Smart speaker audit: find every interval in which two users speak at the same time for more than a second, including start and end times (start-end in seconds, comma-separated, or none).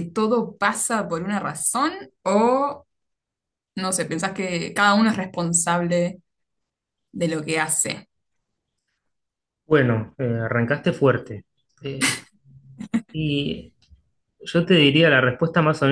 none